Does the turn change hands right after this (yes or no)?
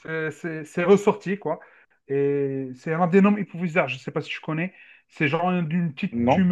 no